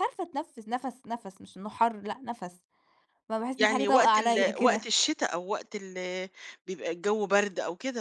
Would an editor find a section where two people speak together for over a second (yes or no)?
yes